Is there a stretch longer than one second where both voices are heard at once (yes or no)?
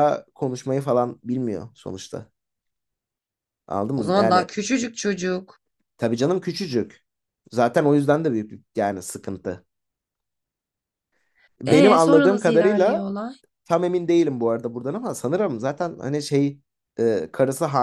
yes